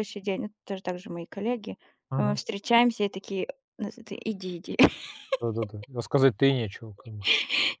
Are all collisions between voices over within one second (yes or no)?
yes